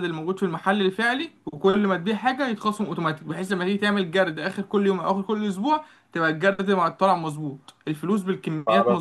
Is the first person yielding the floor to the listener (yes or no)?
yes